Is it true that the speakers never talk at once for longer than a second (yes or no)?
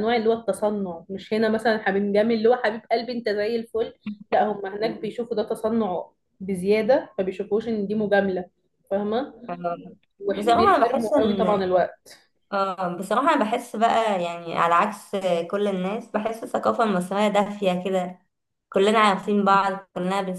no